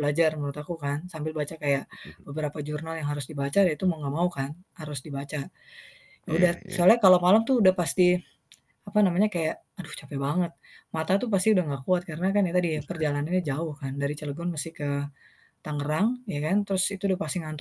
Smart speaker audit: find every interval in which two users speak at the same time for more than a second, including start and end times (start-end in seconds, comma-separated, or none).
none